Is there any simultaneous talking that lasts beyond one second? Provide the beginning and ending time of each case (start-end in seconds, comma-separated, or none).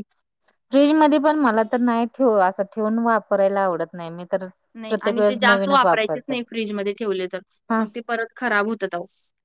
4.9-6.3